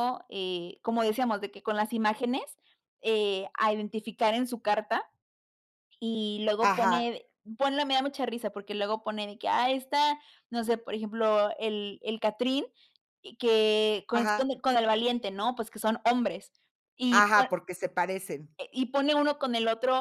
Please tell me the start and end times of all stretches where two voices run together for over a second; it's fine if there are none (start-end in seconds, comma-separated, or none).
none